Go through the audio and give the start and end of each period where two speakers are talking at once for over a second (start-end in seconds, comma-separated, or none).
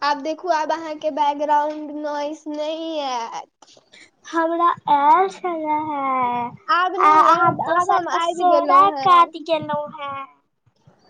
7.1-9.3